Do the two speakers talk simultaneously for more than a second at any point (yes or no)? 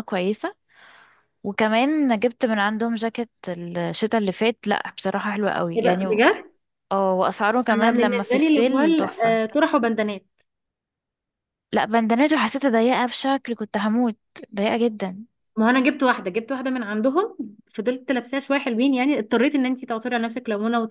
yes